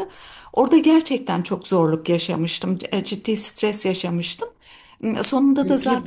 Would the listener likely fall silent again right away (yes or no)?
no